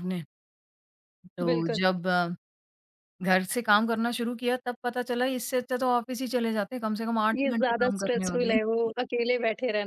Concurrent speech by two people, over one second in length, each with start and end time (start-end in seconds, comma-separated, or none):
7.4-8.6